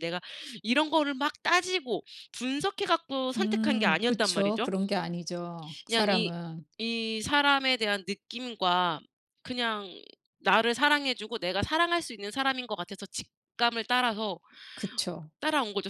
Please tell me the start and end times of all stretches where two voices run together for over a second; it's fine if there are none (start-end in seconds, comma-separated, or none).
3.4-4.7